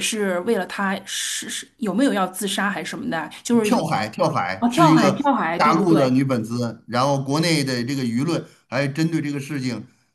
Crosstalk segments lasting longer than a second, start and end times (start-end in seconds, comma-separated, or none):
4.6-6.1